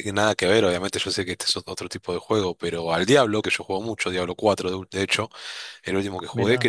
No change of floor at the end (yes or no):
yes